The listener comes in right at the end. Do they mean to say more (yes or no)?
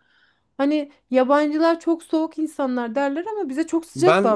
yes